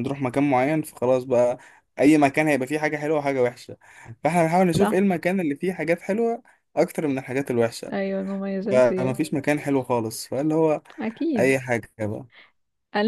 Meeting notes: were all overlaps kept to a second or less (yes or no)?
yes